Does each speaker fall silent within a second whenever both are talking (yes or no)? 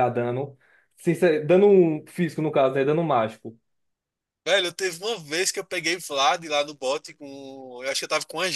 yes